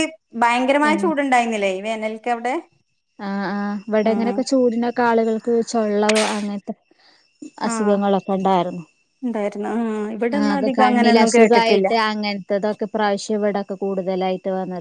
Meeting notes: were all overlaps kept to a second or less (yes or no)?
no